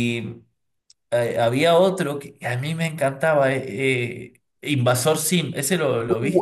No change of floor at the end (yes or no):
no